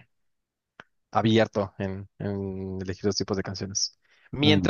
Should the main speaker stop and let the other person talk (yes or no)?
no